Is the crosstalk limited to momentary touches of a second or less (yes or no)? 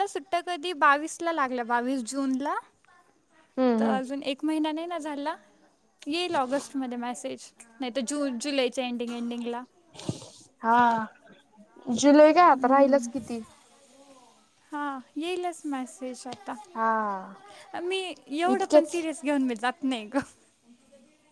yes